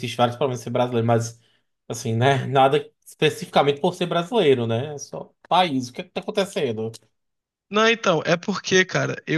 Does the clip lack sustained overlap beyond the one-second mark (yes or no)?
yes